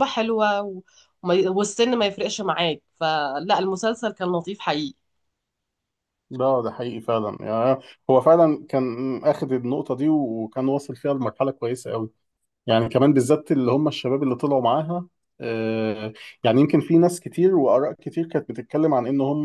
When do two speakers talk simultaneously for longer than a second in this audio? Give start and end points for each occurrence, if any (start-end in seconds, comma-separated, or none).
none